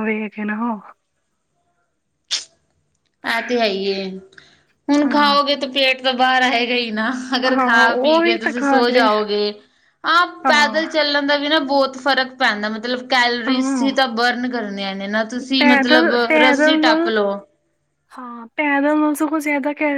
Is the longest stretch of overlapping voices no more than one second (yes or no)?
no